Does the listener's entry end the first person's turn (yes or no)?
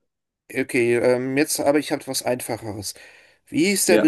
no